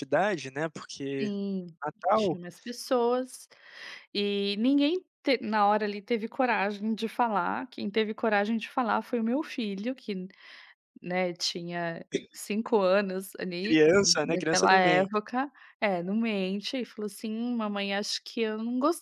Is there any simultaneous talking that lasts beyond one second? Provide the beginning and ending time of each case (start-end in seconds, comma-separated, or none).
13.6-15.2